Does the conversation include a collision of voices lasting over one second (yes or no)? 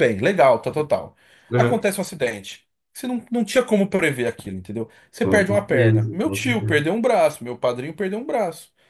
yes